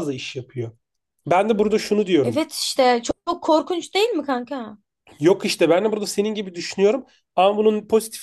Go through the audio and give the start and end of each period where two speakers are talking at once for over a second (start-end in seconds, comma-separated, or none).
none